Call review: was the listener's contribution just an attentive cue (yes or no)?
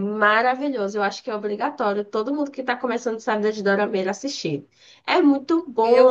no